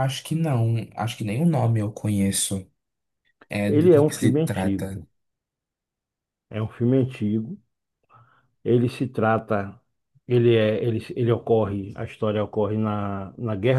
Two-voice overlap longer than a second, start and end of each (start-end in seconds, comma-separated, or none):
3.6-5.0